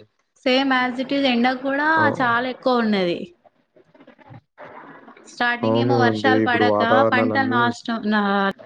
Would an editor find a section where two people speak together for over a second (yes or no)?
yes